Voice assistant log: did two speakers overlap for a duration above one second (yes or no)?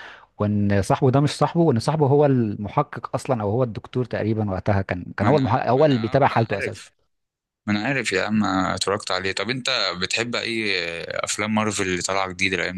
yes